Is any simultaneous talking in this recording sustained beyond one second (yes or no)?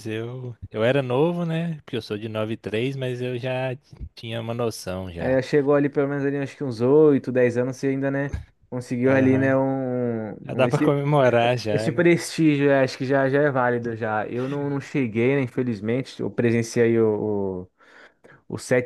no